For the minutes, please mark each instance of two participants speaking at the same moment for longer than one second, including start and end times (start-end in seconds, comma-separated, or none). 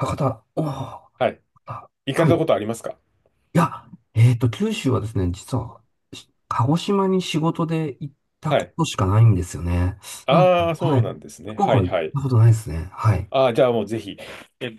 10.3-12.2